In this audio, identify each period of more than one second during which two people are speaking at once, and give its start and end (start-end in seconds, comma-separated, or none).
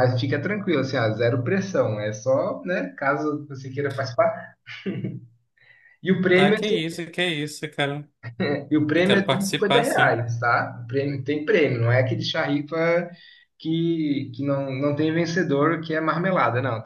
8.9-10.2